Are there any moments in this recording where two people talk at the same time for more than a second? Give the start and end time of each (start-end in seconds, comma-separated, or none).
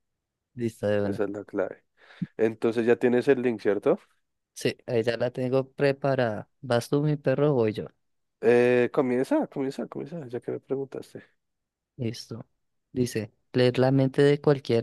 none